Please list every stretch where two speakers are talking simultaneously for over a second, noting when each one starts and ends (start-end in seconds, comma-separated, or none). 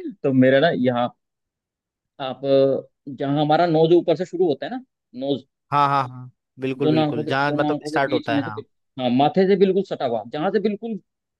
6.8-8.6